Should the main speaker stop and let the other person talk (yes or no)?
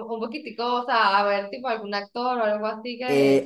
yes